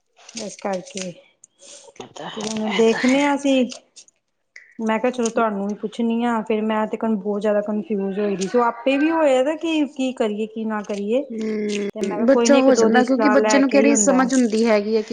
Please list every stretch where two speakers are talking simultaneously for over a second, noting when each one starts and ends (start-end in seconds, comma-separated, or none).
11.7-14.2